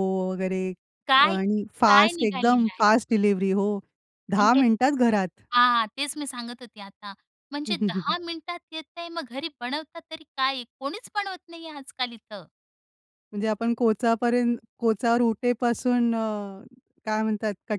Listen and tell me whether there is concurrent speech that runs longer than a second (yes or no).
yes